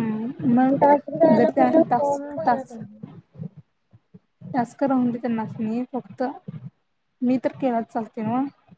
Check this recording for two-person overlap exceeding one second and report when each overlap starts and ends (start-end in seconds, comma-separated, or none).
1.4-2.8